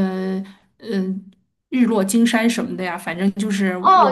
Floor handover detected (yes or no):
yes